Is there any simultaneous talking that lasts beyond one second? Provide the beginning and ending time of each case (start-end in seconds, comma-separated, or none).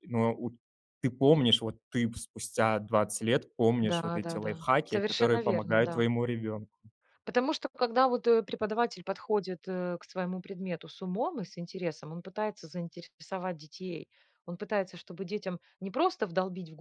3.8-6.1